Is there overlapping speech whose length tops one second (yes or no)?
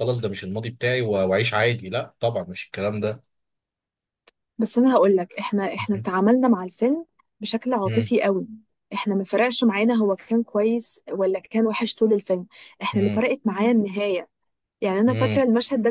no